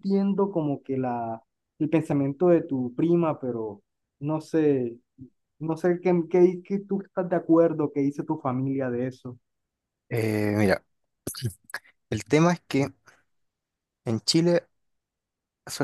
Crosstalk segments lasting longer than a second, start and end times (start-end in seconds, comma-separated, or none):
none